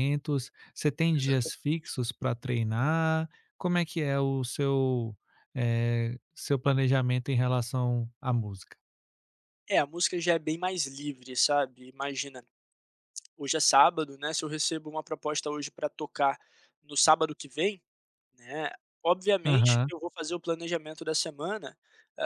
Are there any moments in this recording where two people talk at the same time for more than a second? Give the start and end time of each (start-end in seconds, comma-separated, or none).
none